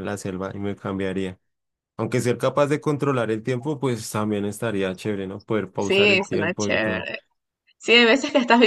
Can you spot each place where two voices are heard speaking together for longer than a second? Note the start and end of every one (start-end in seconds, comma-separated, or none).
5.8-7.1